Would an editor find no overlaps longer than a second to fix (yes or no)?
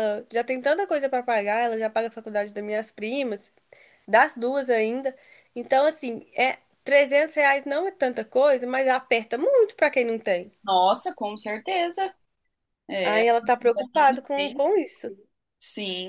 no